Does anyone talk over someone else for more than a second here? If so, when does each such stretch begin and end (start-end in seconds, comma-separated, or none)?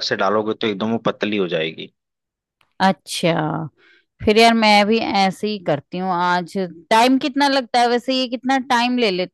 none